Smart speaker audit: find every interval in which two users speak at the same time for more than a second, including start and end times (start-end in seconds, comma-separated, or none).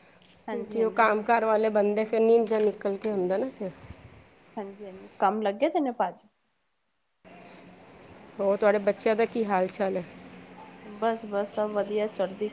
none